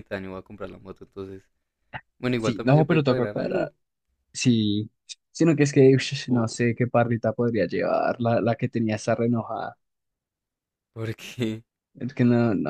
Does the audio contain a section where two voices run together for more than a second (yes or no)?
yes